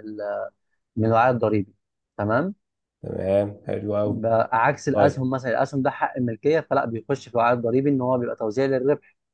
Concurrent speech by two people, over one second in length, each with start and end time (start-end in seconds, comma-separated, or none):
none